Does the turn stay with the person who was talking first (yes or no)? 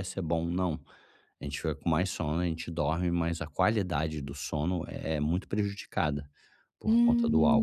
no